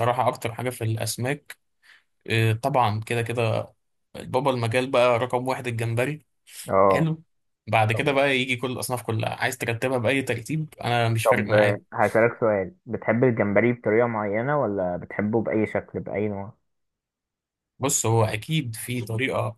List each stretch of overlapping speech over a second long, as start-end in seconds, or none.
none